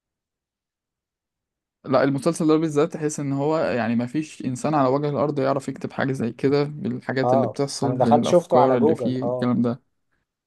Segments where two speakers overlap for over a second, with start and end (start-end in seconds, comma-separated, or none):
7.2-9.5